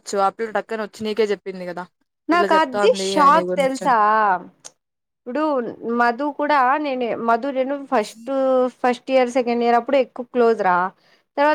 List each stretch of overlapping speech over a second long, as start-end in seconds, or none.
none